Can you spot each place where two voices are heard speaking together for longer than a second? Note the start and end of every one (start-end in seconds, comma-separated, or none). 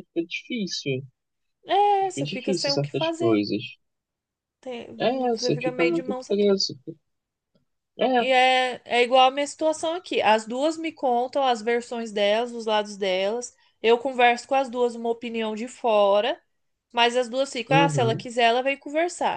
2.1-3.5, 5.3-6.6